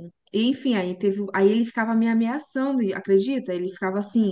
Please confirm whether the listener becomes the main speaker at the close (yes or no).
no